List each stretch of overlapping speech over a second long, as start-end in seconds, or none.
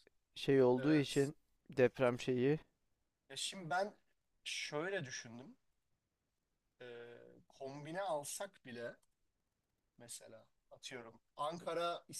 none